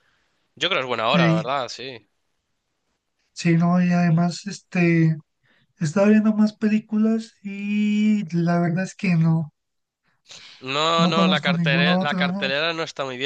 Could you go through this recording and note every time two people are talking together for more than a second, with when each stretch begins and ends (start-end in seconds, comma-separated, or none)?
11.0-12.5